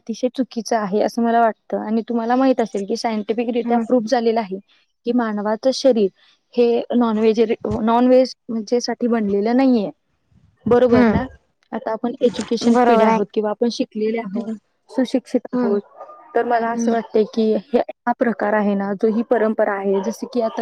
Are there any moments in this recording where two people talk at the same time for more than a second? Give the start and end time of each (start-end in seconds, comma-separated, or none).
none